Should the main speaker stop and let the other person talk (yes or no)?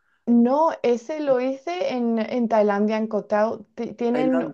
no